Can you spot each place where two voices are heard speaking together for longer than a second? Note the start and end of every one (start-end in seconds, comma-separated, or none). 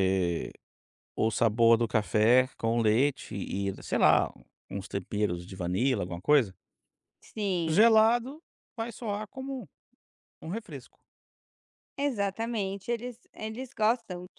none